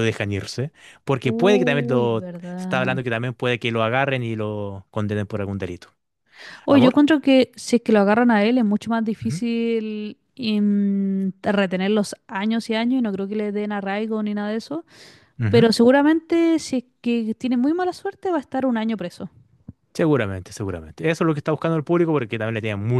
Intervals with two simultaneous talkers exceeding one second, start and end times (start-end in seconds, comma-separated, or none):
1.2-3.0